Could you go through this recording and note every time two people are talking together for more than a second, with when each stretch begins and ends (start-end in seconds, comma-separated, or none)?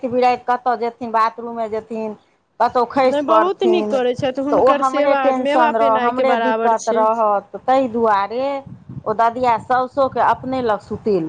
3.0-7.0